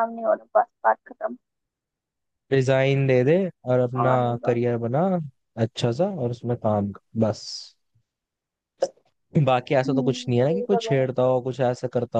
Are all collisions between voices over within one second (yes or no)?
no